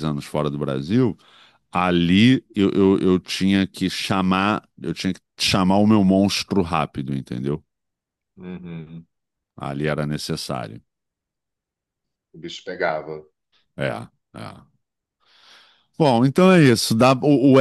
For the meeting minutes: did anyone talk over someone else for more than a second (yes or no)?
no